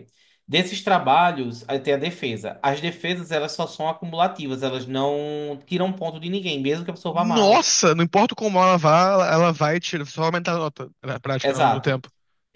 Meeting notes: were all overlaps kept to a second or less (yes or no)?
yes